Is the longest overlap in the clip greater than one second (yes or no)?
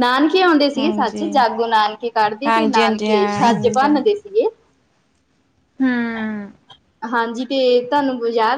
yes